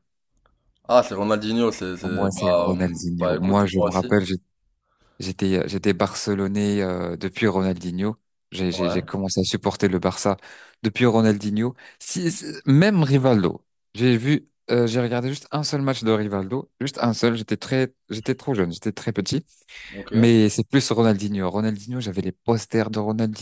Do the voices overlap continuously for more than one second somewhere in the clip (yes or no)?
yes